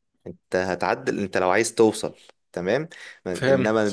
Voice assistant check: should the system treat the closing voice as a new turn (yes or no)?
no